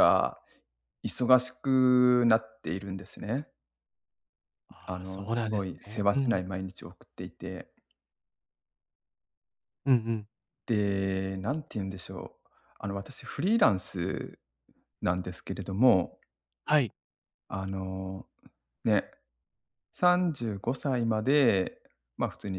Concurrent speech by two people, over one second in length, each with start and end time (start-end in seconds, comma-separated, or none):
4.9-6.4